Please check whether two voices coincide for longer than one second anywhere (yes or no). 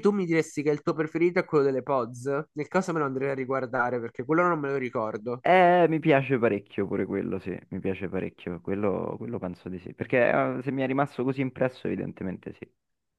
no